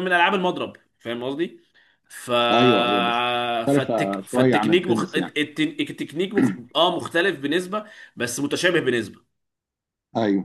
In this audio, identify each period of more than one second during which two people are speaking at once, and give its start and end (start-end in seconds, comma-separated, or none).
3.7-5.3